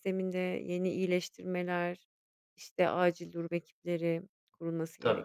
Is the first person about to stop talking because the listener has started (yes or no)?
yes